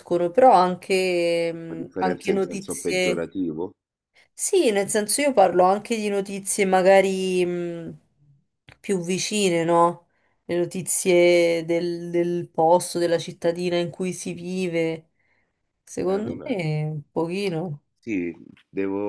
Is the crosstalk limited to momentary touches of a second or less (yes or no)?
no